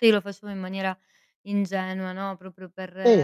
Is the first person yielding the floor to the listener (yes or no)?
yes